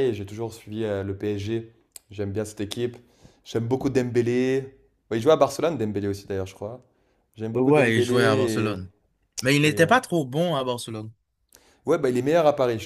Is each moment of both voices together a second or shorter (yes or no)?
no